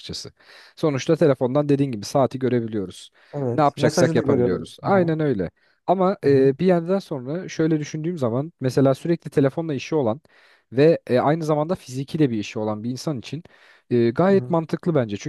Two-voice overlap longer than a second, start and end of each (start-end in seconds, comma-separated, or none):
3.5-5.1